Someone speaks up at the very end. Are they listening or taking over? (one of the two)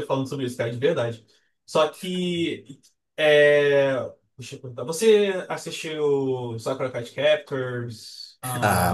taking over